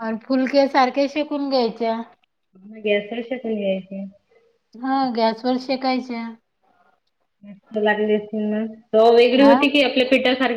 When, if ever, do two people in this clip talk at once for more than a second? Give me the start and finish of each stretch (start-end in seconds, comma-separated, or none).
none